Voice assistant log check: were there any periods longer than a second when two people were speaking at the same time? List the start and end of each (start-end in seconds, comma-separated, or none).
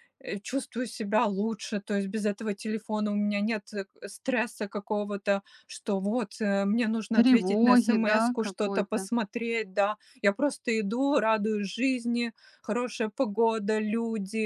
7.1-9.1